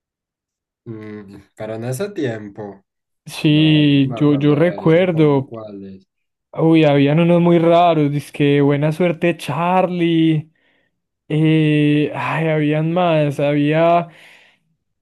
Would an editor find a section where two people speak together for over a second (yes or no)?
yes